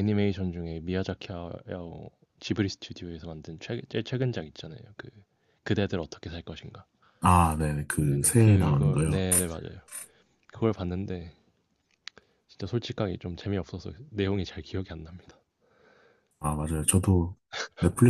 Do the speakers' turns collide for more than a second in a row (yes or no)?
yes